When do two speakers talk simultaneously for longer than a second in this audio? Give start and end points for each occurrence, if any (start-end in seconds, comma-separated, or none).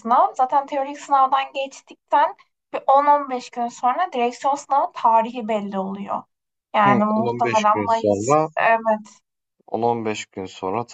6.8-8.5